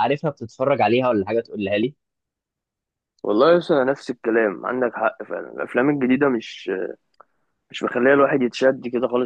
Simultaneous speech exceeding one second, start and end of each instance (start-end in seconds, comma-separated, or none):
none